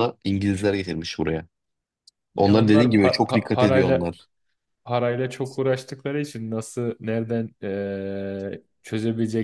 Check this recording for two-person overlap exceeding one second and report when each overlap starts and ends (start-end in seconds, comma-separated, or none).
2.4-4.1